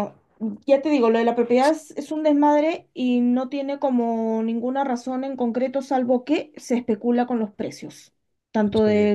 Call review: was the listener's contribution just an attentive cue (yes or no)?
yes